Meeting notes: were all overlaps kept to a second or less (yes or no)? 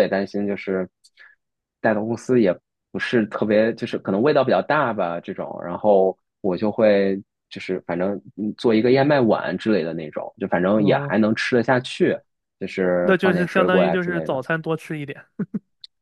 no